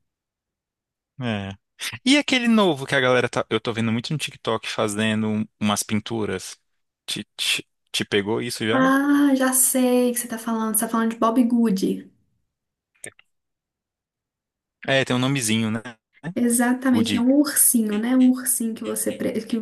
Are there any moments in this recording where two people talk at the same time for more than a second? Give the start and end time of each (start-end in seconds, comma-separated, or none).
none